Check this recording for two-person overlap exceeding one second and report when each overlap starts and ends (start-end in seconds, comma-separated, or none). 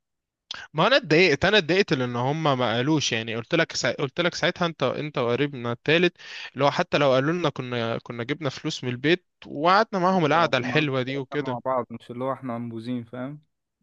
10.3-11.6